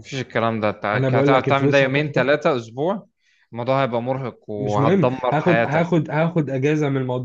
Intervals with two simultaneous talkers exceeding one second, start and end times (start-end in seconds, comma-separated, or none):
0.9-2.3, 4.6-5.9